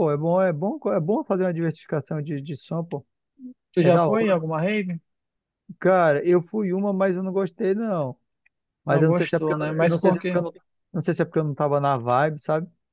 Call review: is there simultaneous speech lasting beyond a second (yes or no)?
yes